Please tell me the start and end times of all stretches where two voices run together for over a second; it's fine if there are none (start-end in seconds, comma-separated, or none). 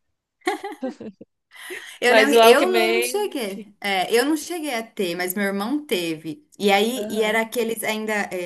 2.1-3.7